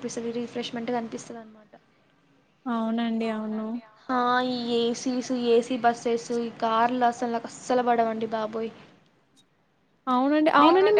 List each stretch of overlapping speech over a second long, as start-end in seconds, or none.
none